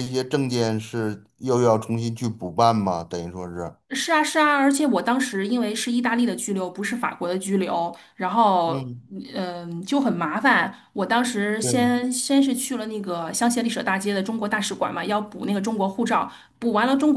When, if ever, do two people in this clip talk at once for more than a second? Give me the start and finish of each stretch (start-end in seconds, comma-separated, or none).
none